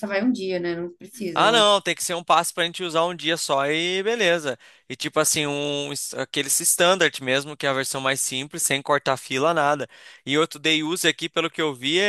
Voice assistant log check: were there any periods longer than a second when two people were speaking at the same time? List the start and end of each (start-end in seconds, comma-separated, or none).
none